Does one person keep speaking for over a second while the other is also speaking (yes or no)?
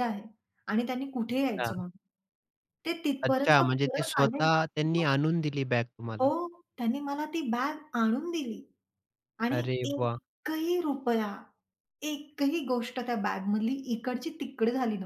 yes